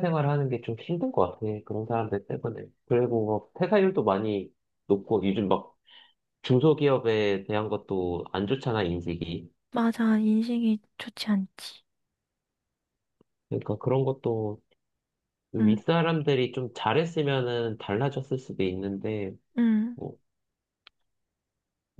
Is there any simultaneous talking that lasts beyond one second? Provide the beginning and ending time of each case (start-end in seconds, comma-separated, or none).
none